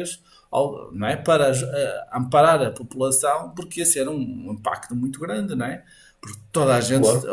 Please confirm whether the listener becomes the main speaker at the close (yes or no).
no